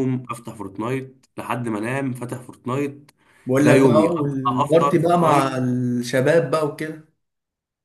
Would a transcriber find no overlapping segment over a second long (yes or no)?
no